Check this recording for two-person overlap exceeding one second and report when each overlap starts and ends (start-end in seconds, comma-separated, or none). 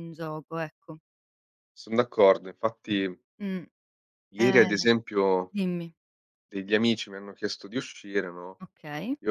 none